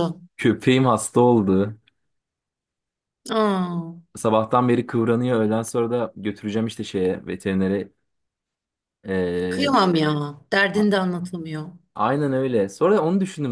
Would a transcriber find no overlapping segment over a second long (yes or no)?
yes